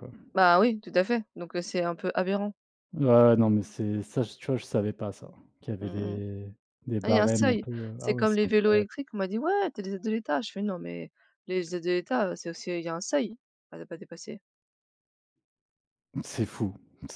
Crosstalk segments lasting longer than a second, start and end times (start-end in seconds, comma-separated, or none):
7.0-8.8